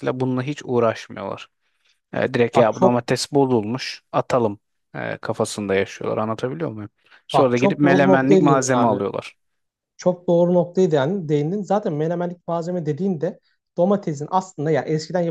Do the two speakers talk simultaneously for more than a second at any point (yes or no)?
yes